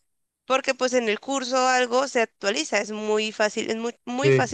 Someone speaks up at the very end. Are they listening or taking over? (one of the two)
listening